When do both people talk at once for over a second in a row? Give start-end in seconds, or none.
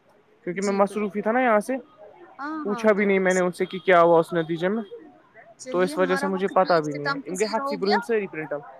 5.7-8.0